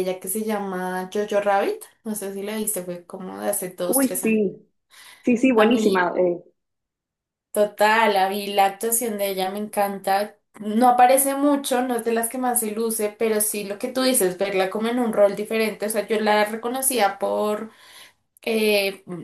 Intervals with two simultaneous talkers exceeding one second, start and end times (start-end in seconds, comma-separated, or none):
none